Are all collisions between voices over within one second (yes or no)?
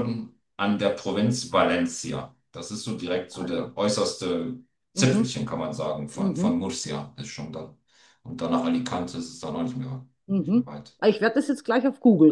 yes